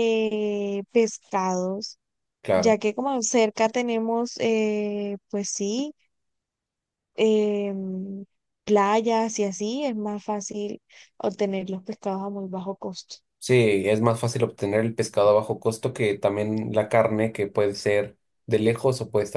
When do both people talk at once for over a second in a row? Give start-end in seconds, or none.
none